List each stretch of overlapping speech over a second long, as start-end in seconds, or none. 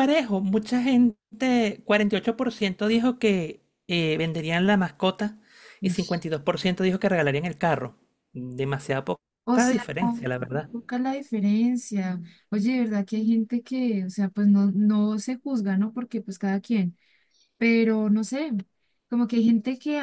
none